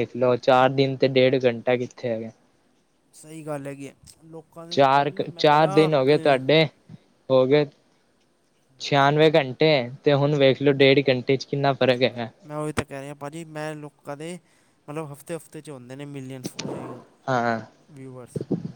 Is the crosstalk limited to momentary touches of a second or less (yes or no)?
no